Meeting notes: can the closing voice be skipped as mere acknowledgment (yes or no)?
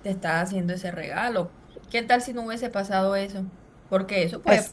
yes